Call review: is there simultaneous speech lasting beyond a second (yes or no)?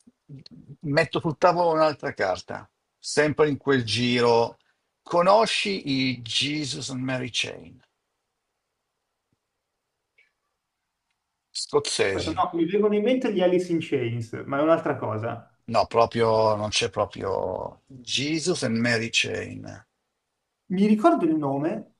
no